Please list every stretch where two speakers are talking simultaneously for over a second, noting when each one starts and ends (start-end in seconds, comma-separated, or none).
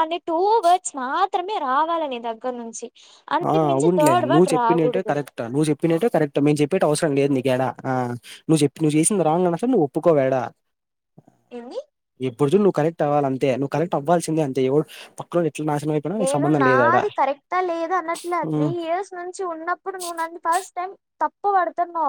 none